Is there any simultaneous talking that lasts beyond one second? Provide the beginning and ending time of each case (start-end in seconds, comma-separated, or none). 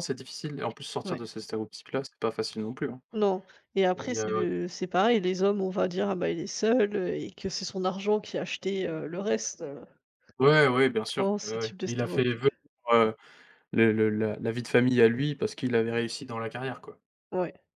11.2-12.5